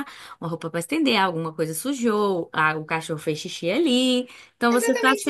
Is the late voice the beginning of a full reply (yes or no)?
yes